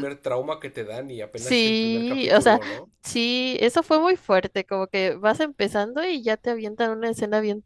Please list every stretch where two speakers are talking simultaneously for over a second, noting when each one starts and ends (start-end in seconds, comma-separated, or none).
1.4-2.6